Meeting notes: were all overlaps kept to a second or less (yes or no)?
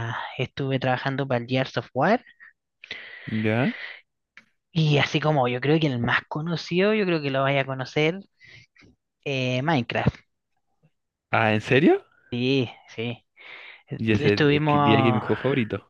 no